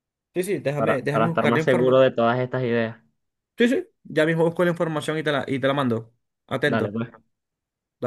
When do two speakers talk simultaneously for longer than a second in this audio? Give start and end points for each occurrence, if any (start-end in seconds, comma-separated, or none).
0.8-2.0